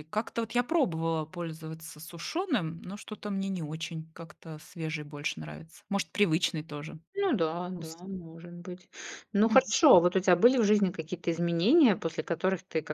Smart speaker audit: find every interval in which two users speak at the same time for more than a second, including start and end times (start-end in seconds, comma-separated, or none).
none